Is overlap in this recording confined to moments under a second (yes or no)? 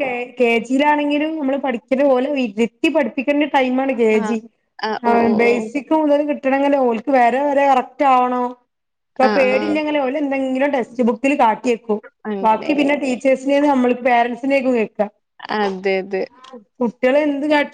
yes